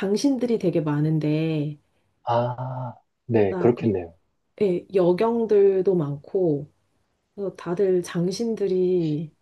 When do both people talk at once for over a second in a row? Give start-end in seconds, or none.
none